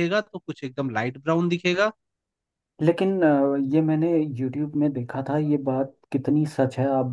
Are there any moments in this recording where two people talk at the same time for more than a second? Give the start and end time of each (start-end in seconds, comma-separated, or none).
none